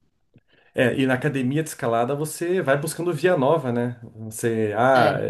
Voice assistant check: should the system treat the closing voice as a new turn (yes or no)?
no